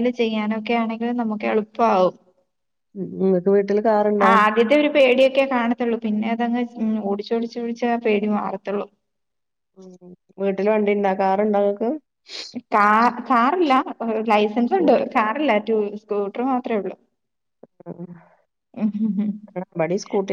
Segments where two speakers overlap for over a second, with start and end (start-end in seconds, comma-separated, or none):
none